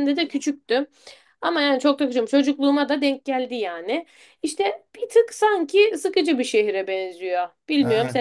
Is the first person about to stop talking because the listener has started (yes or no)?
yes